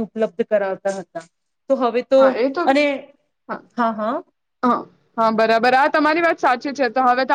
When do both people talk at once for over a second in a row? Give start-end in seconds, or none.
none